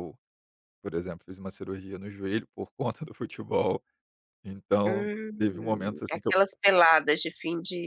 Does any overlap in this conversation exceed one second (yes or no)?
yes